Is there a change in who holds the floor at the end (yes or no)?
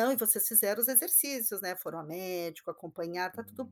yes